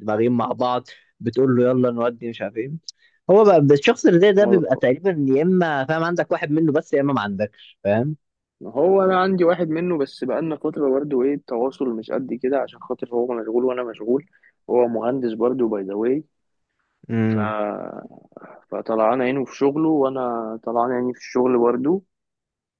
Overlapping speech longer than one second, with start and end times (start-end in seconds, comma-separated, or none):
none